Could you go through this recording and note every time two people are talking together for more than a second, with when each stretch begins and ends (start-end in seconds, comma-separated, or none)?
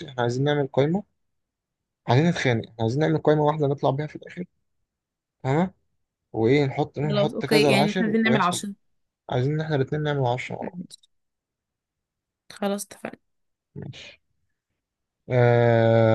7.1-8.6